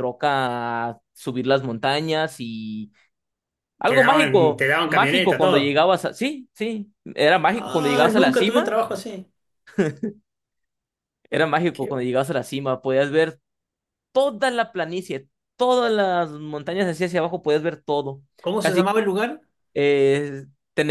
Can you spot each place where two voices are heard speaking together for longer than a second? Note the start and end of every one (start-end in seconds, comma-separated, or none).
3.9-5.8, 7.5-8.7